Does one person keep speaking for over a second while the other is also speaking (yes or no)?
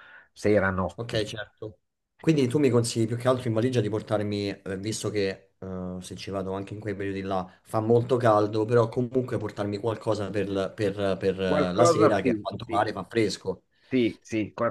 yes